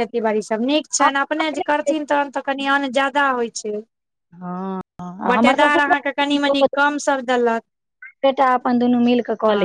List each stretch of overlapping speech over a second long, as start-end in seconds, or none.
5.3-6.7